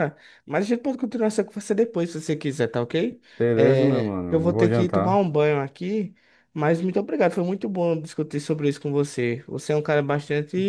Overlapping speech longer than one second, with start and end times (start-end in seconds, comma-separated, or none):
3.4-5.2